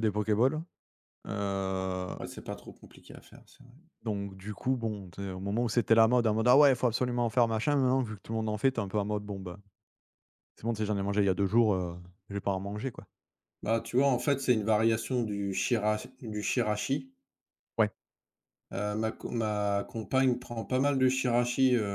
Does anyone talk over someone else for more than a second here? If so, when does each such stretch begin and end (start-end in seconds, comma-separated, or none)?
none